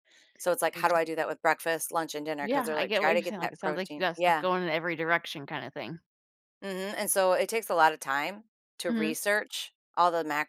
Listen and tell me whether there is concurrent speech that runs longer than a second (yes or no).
yes